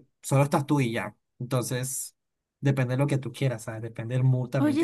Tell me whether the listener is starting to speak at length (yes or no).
yes